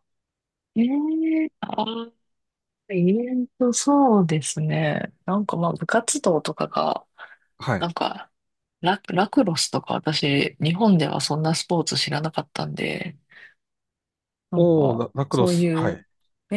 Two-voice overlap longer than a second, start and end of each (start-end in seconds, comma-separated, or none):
14.5-16.0